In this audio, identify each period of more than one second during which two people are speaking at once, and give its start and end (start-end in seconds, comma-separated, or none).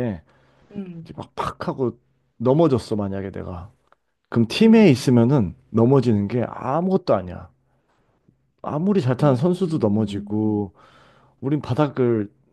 9.2-10.6